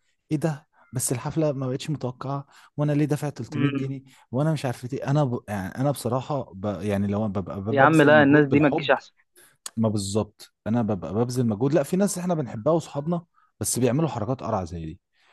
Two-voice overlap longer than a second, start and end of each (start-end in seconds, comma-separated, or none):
7.7-8.9